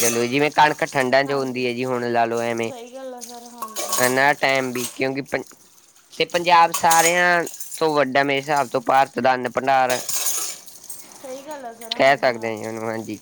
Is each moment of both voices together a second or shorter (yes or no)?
yes